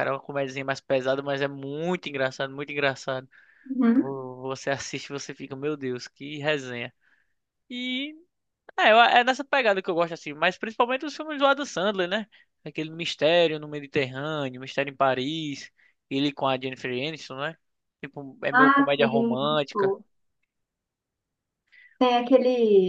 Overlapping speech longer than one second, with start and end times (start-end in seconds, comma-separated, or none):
18.5-19.9